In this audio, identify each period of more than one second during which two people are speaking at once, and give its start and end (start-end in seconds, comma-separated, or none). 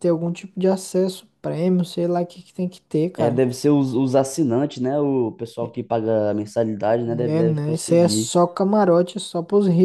7.1-8.3